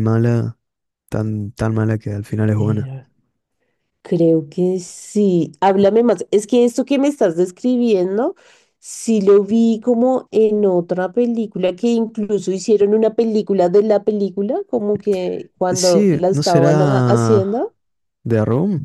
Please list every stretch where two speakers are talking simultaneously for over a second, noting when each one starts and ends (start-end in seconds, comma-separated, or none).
15.7-17.7